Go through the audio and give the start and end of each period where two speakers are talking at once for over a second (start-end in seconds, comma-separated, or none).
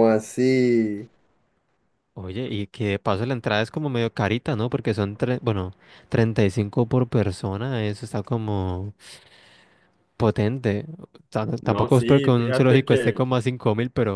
11.6-13.3